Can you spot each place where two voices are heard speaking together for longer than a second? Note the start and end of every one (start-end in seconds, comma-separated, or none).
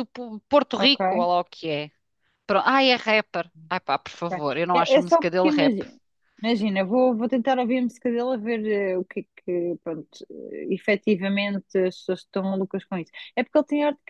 4.1-5.8